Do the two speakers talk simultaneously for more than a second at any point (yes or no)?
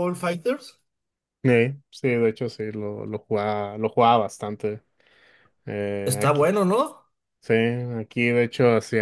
no